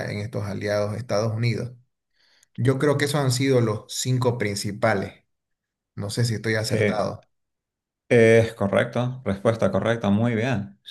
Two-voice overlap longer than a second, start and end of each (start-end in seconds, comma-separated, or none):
none